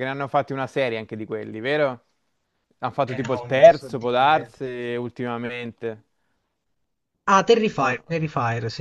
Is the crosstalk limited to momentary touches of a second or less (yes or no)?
no